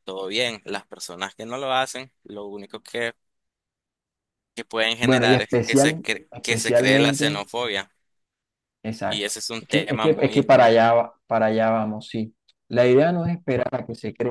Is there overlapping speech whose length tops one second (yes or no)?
yes